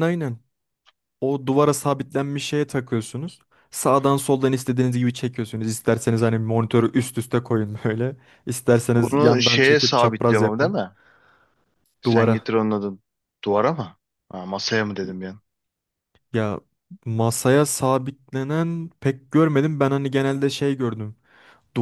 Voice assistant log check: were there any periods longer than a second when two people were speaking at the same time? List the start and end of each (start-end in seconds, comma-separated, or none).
9.0-10.8